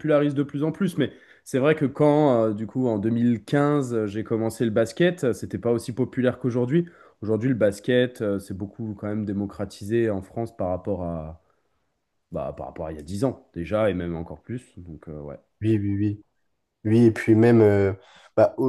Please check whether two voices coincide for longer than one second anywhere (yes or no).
no